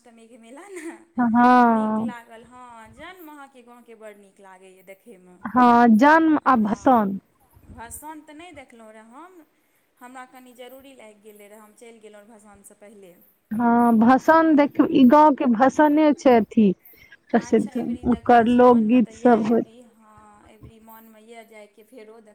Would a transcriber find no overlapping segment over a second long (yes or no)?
no